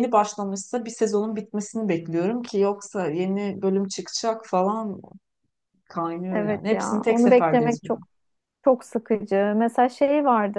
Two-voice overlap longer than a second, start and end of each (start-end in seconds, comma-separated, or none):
6.3-8.1